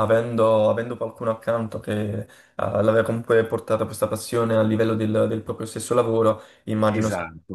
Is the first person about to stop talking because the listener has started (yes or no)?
yes